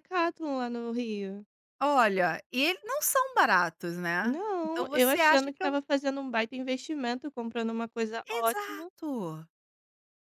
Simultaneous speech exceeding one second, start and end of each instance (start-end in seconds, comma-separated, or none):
4.2-5.8